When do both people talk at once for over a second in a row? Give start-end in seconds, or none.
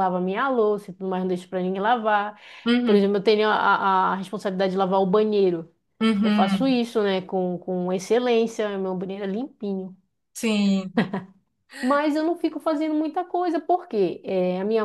none